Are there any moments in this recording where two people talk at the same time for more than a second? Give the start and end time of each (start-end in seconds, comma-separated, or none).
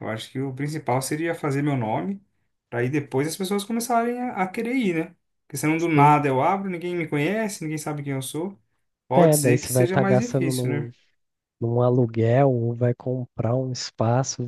9.2-10.9